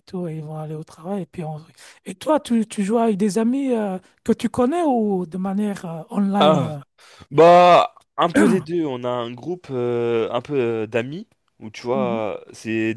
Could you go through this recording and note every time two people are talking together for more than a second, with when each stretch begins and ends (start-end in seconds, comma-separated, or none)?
none